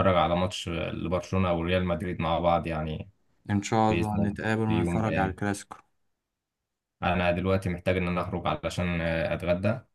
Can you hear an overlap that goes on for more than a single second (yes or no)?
yes